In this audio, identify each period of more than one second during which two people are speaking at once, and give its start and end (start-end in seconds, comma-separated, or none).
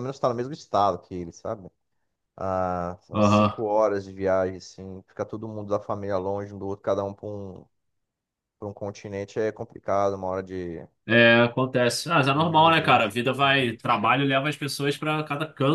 12.3-13.7